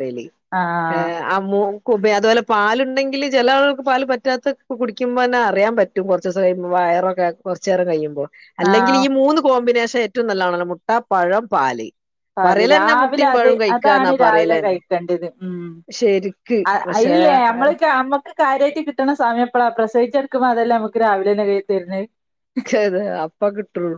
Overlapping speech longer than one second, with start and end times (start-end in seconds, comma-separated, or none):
12.4-14.8